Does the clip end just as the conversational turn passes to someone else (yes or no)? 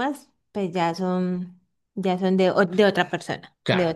yes